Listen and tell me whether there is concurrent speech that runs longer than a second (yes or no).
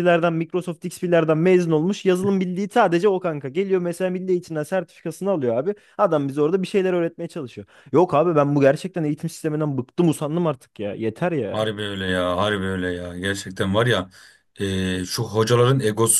no